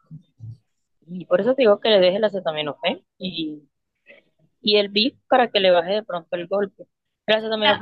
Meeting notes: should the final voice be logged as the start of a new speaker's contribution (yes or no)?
yes